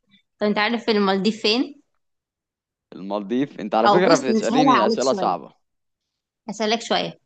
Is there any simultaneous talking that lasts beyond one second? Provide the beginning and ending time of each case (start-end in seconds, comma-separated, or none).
3.9-5.3